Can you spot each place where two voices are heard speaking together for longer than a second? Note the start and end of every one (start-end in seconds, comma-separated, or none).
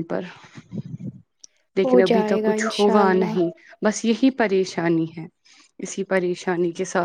1.8-3.4